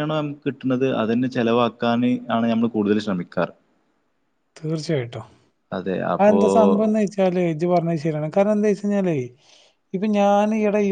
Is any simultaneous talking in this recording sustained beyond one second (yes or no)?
no